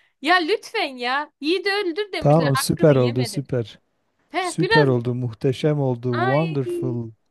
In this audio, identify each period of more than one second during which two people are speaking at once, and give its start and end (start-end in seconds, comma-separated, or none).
2.2-3.4